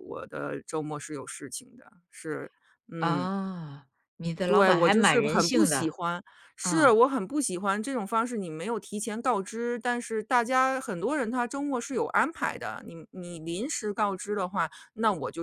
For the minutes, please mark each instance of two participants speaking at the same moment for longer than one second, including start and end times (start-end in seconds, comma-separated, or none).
4.5-6.0